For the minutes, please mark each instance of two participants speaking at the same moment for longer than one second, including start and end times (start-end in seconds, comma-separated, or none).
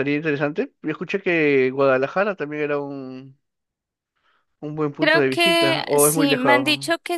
5.0-6.6